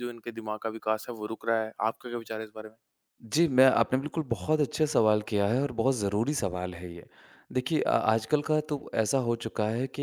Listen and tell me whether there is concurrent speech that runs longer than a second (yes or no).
no